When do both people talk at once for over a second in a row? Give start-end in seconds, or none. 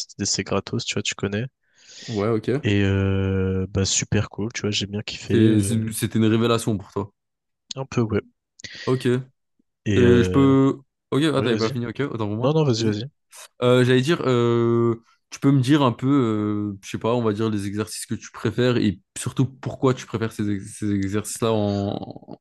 none